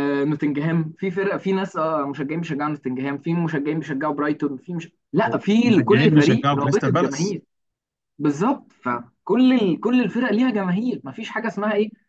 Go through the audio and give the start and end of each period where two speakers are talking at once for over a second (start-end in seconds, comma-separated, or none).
5.6-7.4